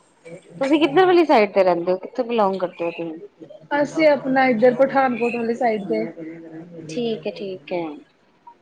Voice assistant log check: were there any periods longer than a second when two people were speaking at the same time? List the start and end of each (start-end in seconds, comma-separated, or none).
none